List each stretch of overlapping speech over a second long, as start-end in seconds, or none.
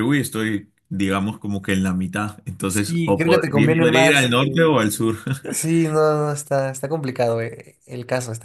2.9-4.7